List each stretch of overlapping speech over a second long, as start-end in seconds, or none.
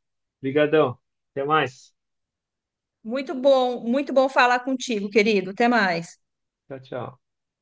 none